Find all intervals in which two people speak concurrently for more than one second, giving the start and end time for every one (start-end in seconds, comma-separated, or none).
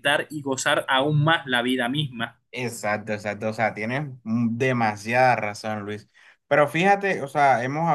none